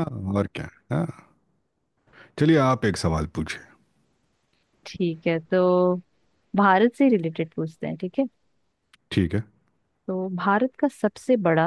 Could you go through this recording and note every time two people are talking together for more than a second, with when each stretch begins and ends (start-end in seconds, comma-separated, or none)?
none